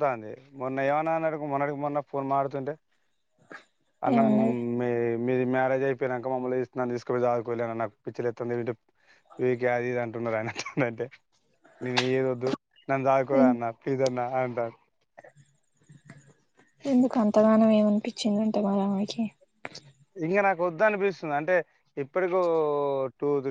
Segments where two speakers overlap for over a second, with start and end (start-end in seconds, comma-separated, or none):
none